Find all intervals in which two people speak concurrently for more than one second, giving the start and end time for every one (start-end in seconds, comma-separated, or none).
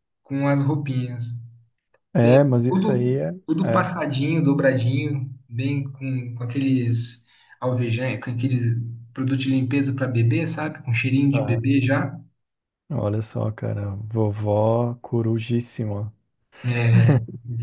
2.2-3.9